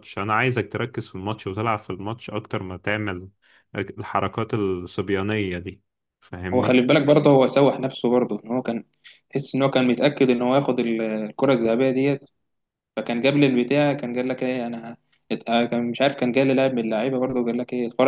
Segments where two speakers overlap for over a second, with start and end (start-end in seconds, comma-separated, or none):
none